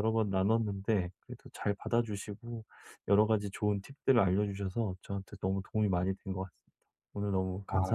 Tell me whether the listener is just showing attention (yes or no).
no